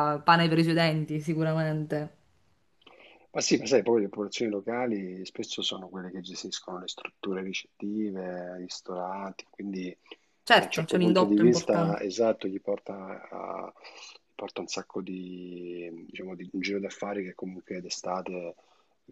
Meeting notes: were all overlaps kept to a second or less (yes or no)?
no